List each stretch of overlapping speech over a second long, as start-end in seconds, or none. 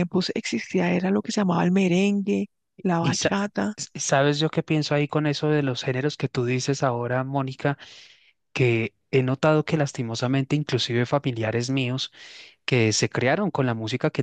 none